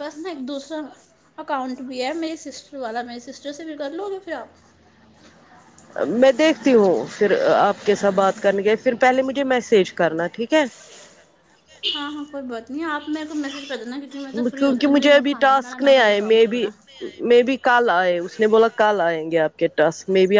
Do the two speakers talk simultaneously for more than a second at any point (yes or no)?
yes